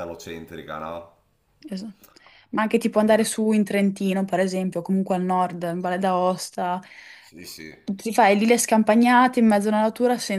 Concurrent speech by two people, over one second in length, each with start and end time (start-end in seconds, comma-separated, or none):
none